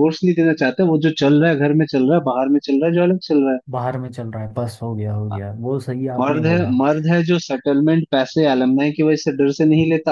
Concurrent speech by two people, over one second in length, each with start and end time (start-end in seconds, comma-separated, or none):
none